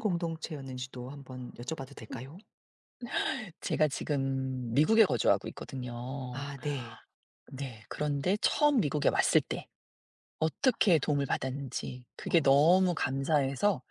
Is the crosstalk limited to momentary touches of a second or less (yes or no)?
yes